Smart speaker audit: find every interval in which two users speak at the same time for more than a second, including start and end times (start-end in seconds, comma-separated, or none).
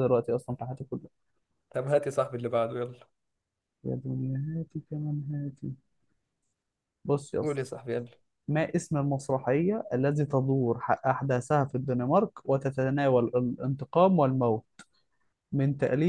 none